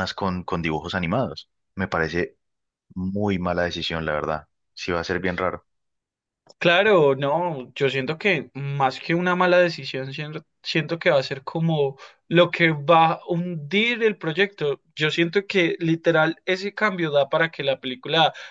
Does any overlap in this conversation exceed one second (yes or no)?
no